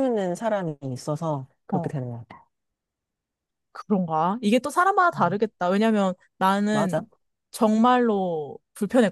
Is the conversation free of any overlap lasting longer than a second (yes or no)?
yes